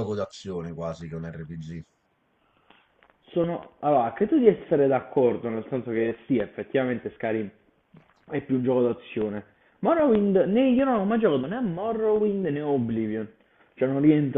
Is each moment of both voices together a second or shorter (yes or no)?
yes